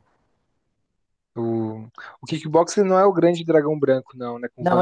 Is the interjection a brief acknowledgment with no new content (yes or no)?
no